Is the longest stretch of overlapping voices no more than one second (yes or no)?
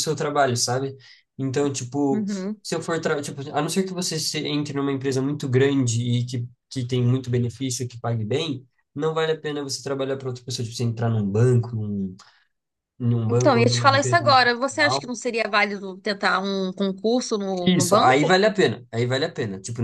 no